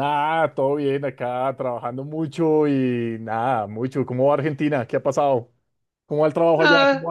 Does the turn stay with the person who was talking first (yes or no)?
no